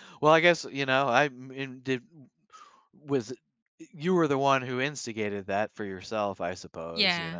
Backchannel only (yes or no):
no